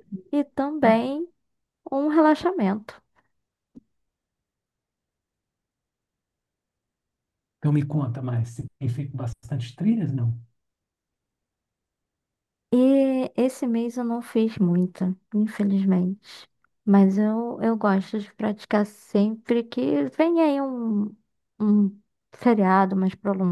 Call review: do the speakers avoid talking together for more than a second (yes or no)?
yes